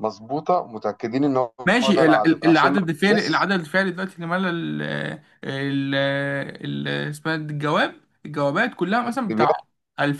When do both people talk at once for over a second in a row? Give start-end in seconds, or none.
1.6-3.5